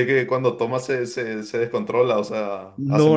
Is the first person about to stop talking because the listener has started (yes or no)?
yes